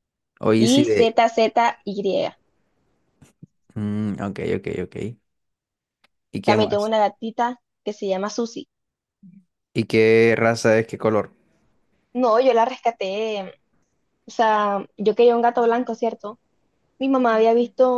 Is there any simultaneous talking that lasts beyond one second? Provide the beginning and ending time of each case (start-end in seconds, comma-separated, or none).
none